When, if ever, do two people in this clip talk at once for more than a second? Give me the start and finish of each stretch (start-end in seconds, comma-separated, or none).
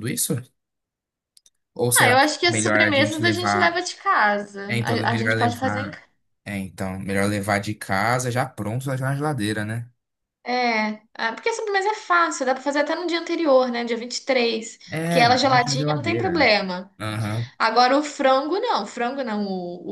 1.9-3.8, 4.7-6.0, 14.9-16.5